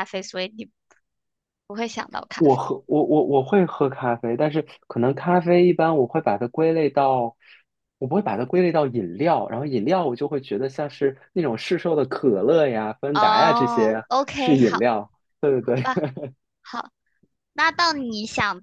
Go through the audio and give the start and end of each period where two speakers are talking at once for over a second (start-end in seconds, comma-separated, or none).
13.1-14.8